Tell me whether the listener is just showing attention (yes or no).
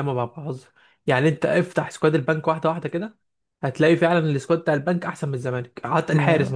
yes